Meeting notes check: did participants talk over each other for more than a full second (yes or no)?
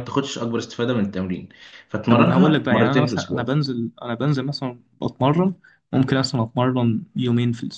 yes